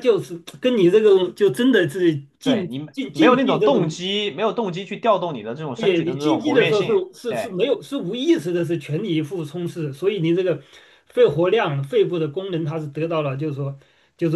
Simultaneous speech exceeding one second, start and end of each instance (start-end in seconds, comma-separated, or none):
2.4-4.0, 5.7-7.5